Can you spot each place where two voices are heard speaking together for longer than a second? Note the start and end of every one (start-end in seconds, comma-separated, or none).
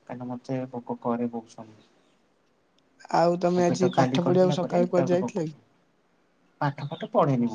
3.6-5.5